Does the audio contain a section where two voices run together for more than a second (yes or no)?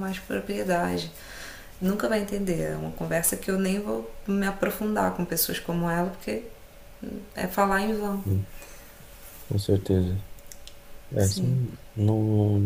no